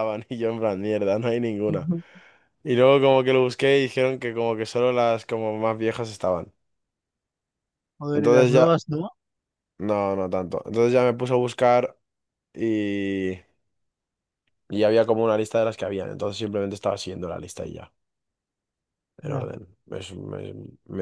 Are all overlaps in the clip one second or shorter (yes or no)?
yes